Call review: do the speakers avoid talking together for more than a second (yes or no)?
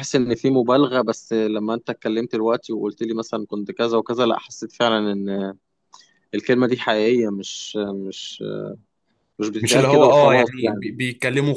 no